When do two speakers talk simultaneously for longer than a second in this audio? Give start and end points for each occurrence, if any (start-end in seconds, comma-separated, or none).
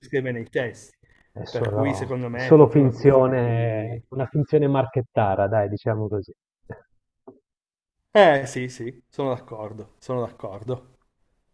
1.5-4.0